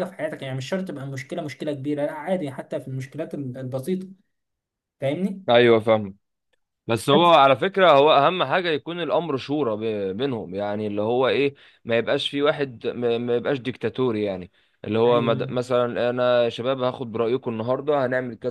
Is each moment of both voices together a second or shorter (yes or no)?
yes